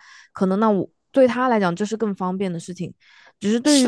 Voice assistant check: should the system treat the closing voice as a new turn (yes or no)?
no